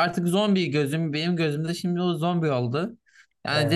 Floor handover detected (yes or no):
no